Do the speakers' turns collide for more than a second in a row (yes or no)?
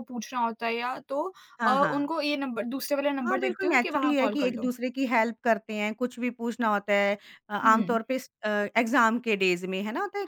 yes